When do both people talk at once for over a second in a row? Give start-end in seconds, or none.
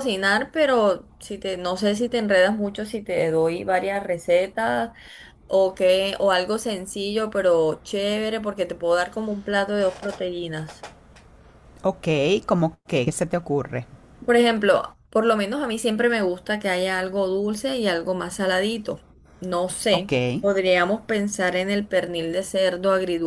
none